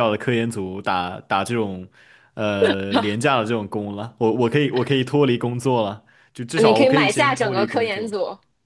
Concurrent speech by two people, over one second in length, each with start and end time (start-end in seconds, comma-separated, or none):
6.6-8.1